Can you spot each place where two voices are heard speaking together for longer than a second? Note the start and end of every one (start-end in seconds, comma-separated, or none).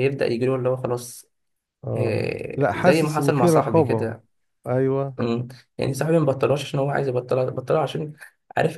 2.0-4.1